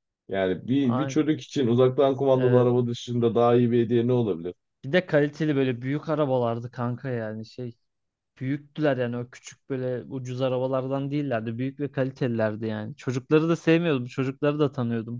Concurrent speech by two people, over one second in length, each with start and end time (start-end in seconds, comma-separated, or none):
none